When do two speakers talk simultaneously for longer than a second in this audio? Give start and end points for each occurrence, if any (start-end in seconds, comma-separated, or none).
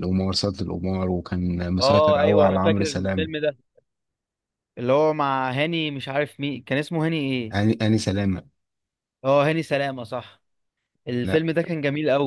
1.8-3.3